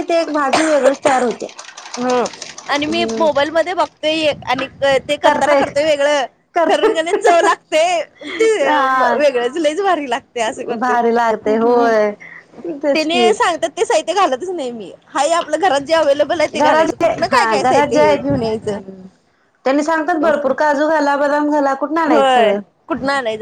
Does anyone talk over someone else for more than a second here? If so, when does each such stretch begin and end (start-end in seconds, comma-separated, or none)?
16.6-18.2